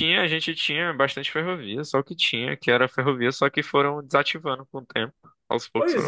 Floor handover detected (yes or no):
yes